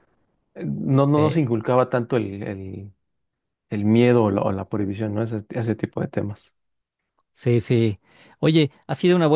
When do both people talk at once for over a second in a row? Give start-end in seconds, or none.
none